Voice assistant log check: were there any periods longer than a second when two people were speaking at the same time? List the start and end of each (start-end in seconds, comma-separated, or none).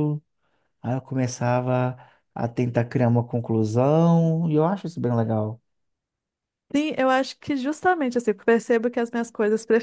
none